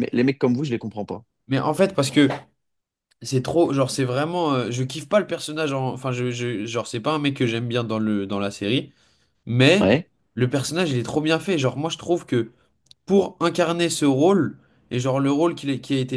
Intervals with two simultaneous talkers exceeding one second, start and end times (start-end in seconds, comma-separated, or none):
none